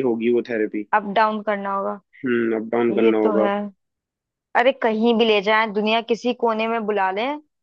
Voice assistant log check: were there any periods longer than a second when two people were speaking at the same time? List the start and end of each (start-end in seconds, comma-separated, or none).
none